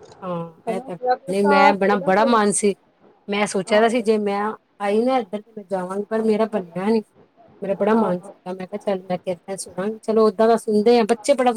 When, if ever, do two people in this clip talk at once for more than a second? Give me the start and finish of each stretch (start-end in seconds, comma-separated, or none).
1.0-2.3